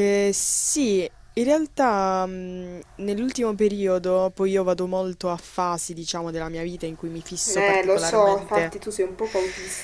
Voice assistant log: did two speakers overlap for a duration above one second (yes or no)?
yes